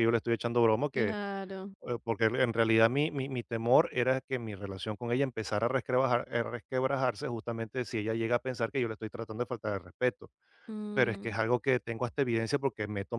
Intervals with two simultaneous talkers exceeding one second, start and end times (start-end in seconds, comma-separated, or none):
none